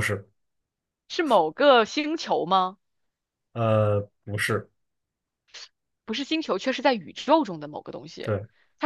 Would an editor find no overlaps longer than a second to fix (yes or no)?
yes